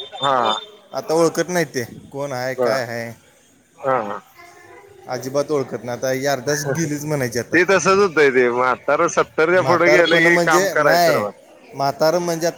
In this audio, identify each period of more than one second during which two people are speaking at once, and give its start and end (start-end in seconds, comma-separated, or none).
none